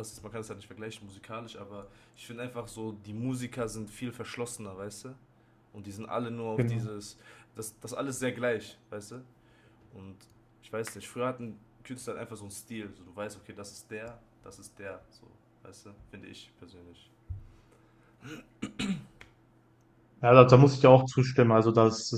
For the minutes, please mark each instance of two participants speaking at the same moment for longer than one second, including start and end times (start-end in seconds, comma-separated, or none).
none